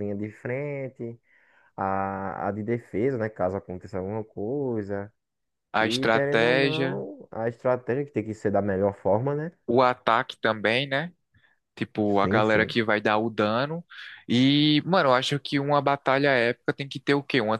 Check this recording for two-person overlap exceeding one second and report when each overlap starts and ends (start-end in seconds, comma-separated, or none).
5.8-7.0